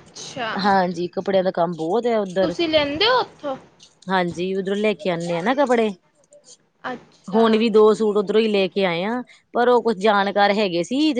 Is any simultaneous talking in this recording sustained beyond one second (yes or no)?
no